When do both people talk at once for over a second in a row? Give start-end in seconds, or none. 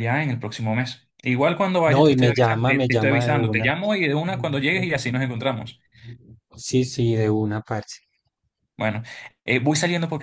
1.9-3.7